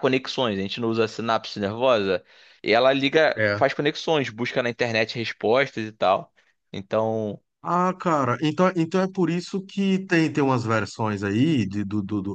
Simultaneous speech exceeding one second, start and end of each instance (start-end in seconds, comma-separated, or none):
none